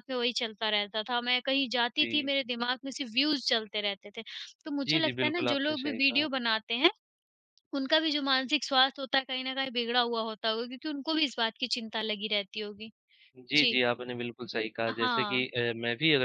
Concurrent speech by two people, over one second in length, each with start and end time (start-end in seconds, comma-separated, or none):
4.9-6.3